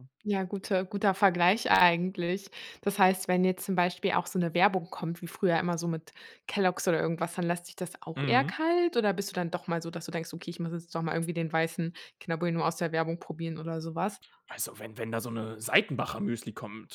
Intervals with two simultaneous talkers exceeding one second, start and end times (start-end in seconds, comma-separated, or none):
none